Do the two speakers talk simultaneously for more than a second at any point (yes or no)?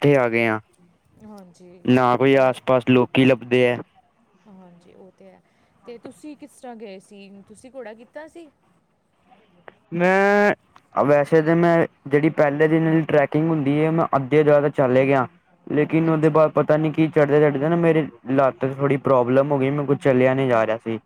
no